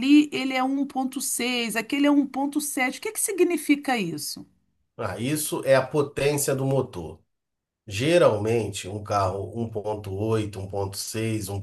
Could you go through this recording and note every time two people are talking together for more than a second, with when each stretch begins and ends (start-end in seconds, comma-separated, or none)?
none